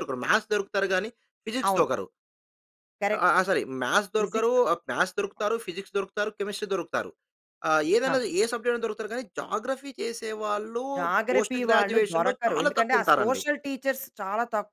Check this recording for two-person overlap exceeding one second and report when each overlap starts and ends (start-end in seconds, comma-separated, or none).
11.3-13.4